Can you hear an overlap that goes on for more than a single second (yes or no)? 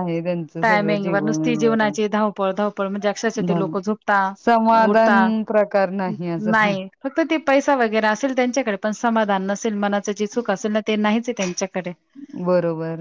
yes